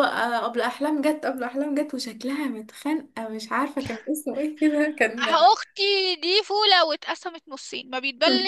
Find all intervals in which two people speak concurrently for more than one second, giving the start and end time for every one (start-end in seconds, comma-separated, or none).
none